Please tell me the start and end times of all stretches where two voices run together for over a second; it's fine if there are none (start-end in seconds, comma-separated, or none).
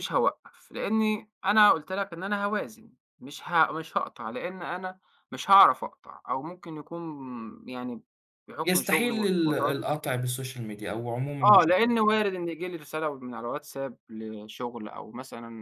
8.6-10.2